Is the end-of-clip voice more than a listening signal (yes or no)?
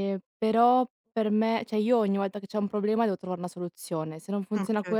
no